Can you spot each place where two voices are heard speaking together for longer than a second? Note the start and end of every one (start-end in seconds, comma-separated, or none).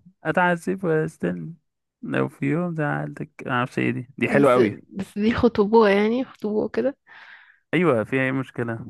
none